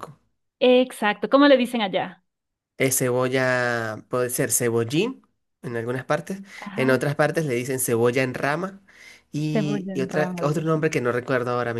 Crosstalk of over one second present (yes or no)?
yes